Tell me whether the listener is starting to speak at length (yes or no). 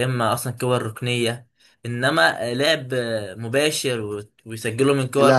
yes